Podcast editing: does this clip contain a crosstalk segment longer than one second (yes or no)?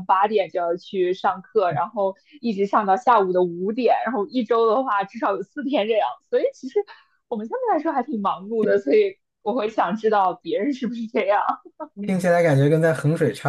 no